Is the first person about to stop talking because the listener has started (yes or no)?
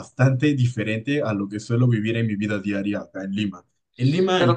no